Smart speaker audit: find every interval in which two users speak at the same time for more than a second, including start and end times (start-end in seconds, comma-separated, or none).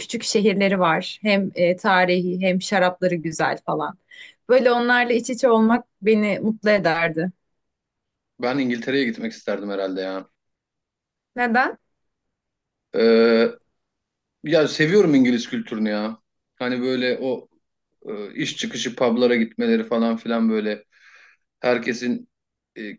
none